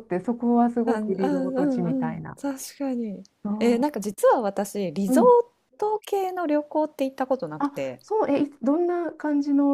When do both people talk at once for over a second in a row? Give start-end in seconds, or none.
0.8-2.4